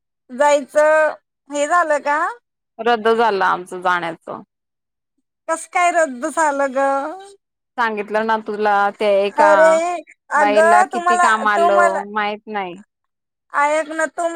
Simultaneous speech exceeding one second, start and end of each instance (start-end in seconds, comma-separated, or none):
10.4-12.0